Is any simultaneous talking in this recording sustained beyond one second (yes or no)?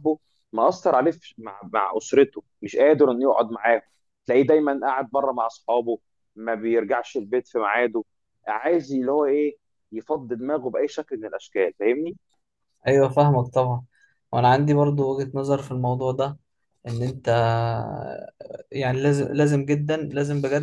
no